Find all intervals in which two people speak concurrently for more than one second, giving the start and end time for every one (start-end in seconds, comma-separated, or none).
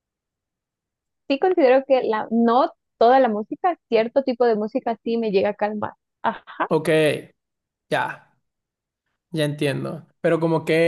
none